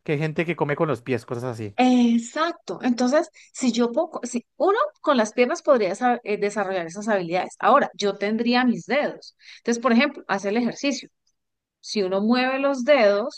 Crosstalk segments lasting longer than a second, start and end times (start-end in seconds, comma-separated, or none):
none